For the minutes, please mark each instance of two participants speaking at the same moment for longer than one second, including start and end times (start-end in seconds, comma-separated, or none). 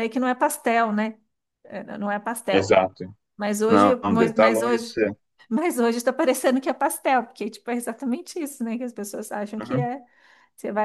3.7-5.0